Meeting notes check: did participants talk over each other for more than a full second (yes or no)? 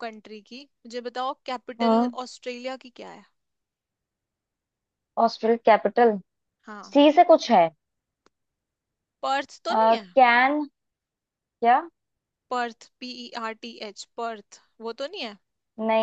no